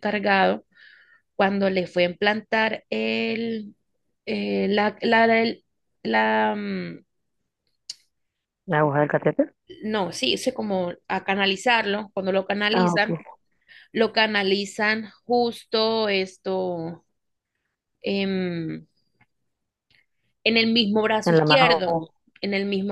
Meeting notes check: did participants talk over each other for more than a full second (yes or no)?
no